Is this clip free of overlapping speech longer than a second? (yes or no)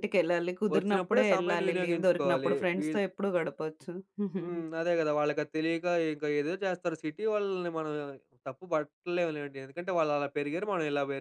no